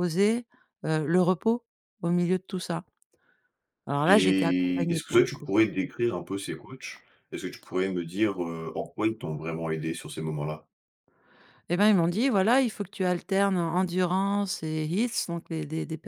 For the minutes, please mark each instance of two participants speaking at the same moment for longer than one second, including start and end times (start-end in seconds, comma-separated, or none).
4.0-5.5